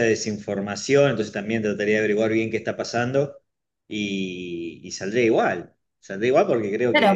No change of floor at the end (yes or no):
no